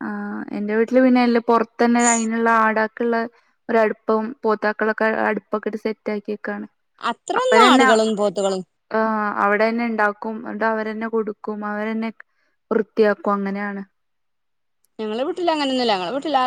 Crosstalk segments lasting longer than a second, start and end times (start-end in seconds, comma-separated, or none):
none